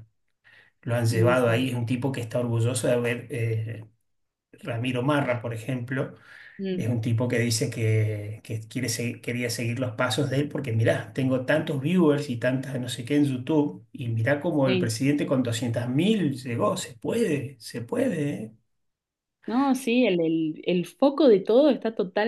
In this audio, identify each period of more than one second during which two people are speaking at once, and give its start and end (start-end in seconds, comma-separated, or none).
none